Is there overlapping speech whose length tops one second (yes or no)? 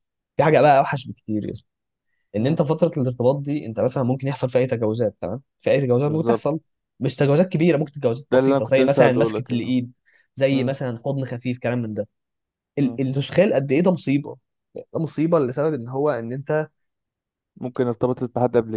yes